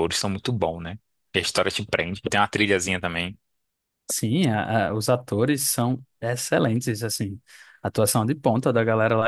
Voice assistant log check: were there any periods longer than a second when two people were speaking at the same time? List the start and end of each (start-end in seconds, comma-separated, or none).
none